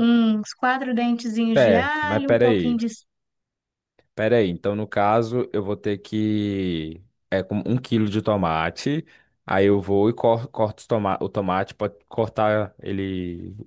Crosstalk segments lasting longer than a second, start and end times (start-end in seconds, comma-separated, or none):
1.5-2.8